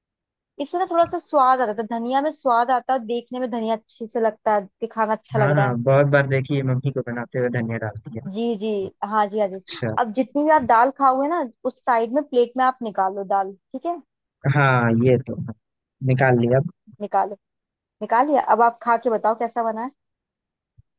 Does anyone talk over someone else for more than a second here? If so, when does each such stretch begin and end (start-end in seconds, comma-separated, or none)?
none